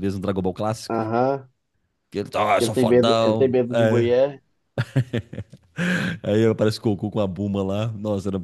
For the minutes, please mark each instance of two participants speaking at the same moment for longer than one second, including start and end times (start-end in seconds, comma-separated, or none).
2.6-4.1